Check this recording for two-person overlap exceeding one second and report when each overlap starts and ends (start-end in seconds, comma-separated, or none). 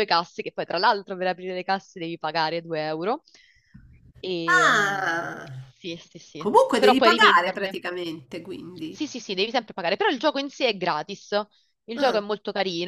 6.4-7.8